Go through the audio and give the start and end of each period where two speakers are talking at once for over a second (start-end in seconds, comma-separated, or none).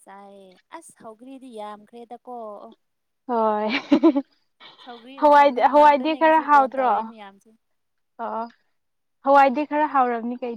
5.2-6.9